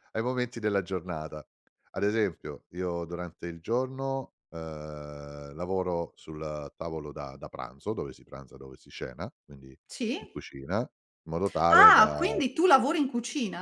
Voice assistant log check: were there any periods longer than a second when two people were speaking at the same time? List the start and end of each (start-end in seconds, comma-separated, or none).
none